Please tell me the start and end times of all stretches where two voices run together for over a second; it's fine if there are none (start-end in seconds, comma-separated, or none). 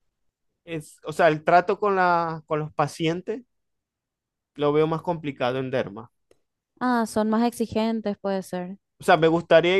none